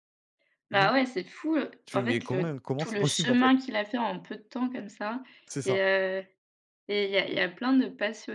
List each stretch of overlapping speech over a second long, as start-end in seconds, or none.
1.9-3.5